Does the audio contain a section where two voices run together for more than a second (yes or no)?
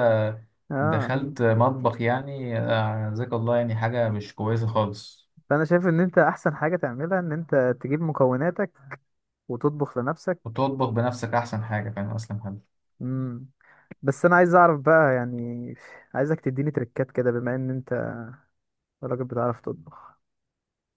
no